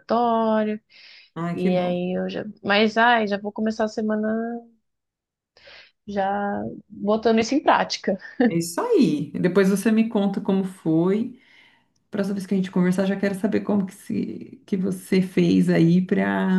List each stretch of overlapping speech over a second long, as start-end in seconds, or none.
none